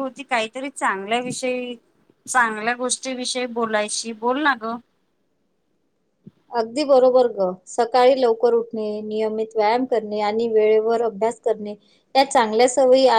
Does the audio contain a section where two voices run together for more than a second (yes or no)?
no